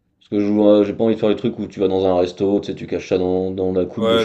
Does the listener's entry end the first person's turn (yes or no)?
yes